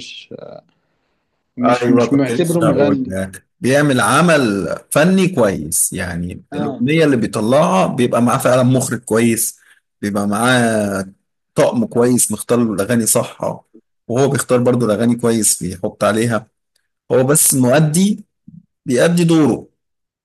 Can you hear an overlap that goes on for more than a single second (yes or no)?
yes